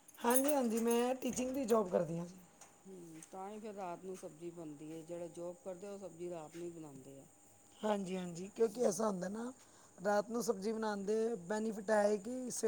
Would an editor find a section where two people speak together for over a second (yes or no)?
no